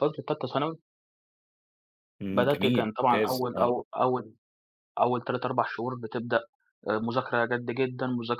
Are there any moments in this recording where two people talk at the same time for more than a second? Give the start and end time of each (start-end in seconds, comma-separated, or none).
2.3-3.7